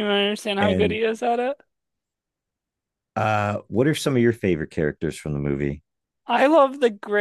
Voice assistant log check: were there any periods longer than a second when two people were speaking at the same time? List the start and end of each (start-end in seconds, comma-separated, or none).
none